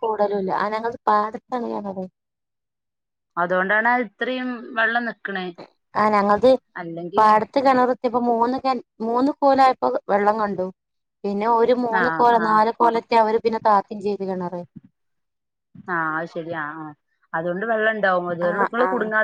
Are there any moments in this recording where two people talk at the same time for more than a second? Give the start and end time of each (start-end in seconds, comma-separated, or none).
none